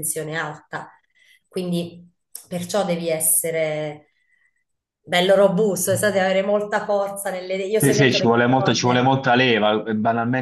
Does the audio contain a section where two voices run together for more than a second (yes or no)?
yes